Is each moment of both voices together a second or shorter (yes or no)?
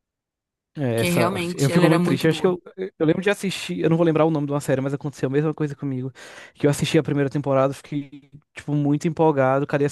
no